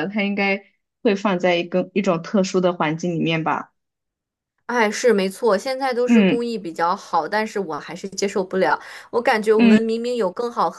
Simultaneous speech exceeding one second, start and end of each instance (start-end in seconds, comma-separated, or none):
none